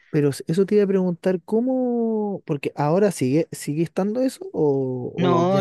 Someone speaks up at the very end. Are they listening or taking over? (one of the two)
taking over